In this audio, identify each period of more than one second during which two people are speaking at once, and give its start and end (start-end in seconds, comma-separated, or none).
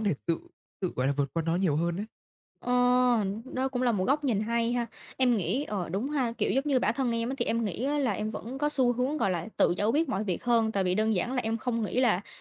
none